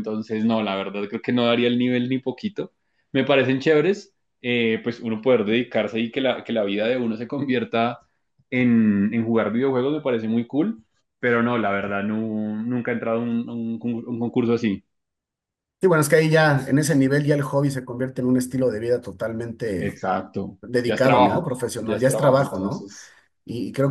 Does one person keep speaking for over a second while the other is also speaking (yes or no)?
yes